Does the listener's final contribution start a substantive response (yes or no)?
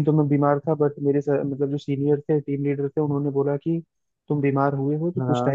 no